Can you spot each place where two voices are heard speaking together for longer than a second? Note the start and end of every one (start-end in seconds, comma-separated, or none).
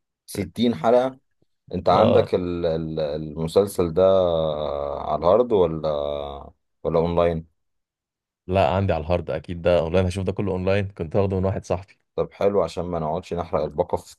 none